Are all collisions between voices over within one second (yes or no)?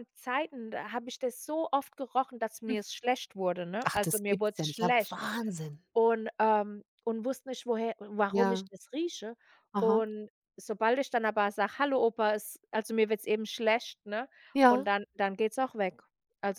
no